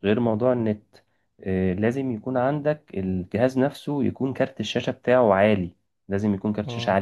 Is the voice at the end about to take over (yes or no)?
yes